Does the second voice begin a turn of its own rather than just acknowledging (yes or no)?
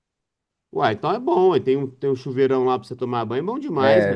yes